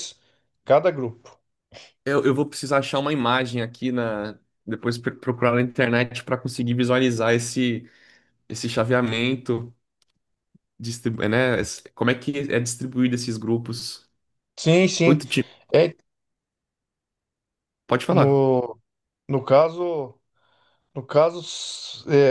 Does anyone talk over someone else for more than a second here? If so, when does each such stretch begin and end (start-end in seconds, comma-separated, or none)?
none